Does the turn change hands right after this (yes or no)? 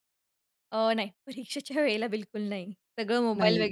no